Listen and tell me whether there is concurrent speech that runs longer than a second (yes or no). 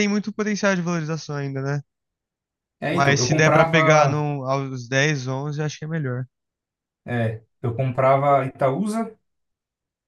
yes